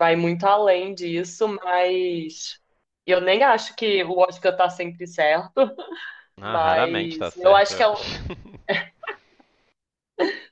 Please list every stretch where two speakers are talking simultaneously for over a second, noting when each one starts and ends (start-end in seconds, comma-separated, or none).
6.4-8.1